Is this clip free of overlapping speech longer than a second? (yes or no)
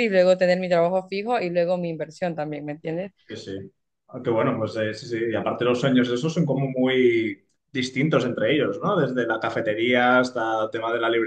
yes